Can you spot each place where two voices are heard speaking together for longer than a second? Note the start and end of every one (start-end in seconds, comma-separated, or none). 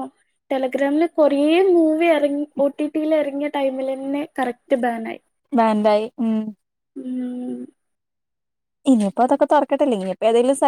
none